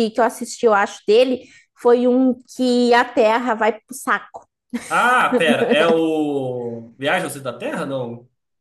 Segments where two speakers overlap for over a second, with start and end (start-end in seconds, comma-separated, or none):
none